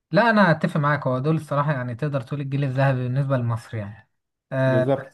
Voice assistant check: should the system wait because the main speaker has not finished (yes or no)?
yes